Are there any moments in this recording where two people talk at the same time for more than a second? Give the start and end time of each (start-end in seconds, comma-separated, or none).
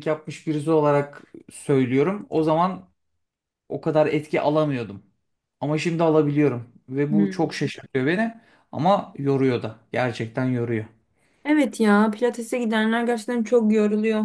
none